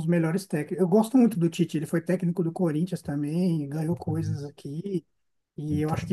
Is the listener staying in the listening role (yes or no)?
yes